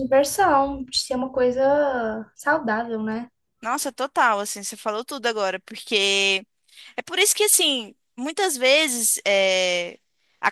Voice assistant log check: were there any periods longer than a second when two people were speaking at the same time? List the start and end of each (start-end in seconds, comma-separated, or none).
none